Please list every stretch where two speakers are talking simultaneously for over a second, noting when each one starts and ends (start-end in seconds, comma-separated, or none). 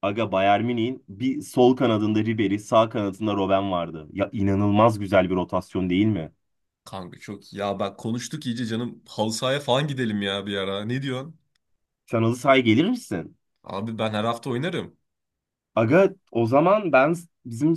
none